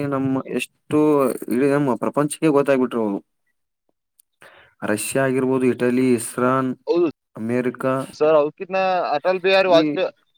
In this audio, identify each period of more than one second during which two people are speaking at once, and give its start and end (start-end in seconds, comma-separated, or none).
none